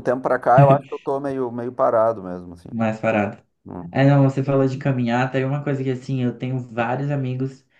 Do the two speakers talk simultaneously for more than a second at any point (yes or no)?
no